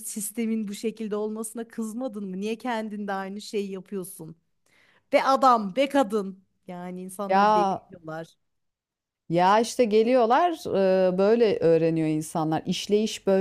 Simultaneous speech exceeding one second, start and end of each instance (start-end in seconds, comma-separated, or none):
none